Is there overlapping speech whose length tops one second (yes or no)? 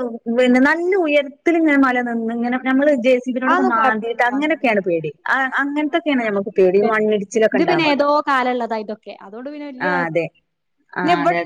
yes